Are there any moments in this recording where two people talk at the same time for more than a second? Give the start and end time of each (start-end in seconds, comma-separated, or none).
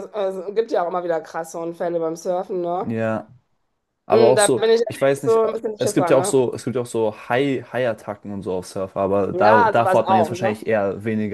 4.1-6.3, 9.3-10.6